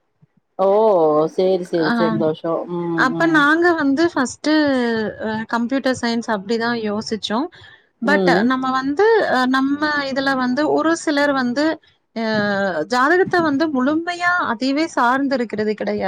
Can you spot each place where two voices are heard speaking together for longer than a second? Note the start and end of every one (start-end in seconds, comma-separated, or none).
none